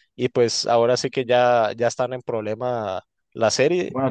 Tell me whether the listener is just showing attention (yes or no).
no